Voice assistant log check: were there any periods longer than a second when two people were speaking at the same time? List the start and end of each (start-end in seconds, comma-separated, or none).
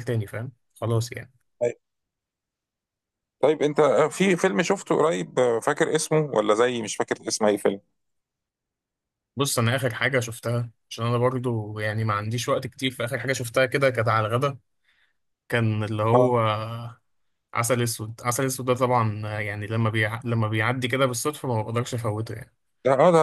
none